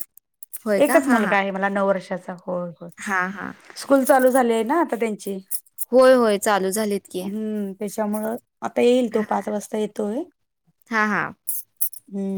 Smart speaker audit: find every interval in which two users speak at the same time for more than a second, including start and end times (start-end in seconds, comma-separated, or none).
none